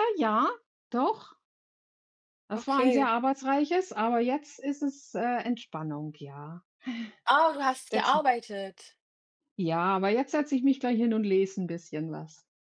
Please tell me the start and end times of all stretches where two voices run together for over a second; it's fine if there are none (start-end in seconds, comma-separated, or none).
none